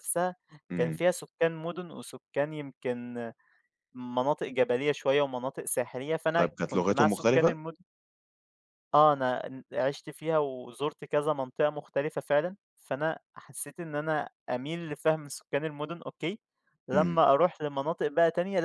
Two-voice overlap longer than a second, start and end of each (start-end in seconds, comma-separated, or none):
6.4-7.6